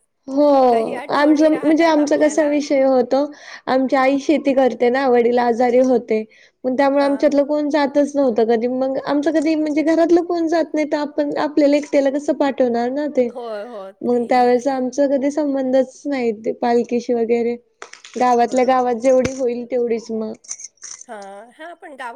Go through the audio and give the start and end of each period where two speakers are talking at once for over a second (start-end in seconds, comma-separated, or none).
1.2-2.6